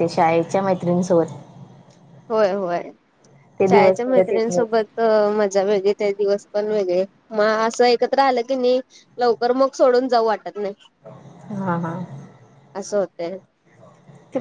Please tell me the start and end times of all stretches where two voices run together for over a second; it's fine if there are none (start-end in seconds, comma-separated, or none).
3.7-4.9